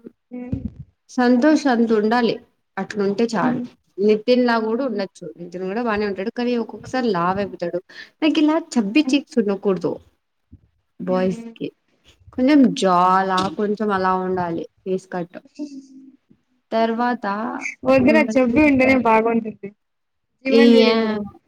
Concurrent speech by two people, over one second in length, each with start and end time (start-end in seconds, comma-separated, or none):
none